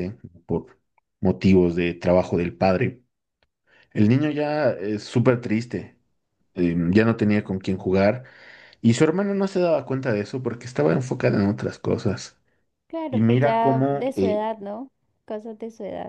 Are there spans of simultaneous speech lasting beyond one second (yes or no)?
yes